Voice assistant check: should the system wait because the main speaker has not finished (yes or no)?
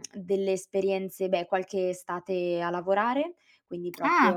no